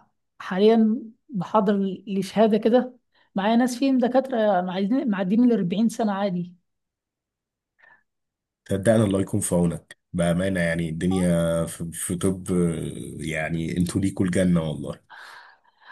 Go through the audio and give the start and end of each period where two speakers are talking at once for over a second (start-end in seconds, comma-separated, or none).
none